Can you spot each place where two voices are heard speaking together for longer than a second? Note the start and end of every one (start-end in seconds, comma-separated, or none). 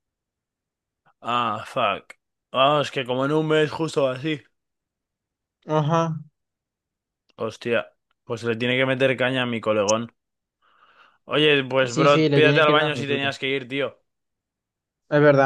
11.9-13.3